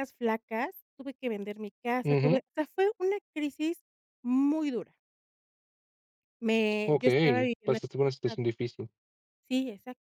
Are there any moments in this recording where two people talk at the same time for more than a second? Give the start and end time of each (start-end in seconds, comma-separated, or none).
6.8-8.5